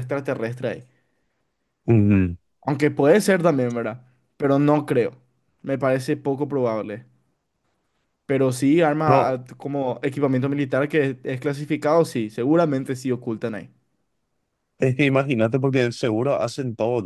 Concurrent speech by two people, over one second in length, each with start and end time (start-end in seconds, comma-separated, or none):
none